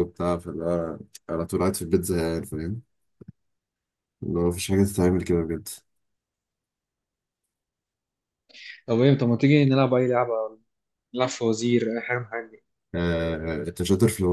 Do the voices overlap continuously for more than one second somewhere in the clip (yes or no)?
no